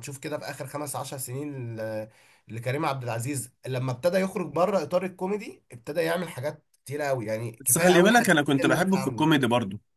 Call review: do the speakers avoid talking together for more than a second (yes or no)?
no